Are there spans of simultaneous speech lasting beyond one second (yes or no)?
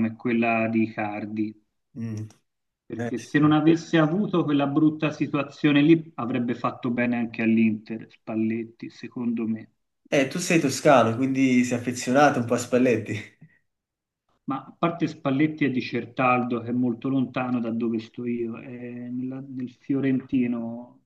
no